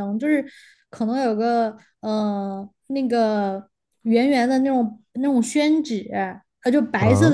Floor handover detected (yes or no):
no